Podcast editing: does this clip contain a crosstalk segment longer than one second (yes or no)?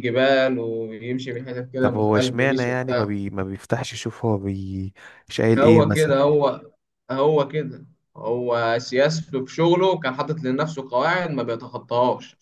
yes